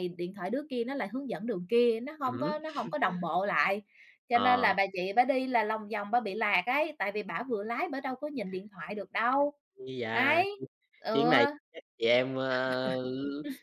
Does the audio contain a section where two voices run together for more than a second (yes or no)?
no